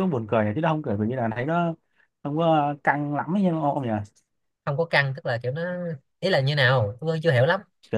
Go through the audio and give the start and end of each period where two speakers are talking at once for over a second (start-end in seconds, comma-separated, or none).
none